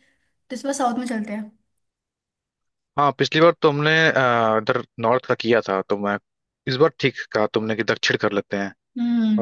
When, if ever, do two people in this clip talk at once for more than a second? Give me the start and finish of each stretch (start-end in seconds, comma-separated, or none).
none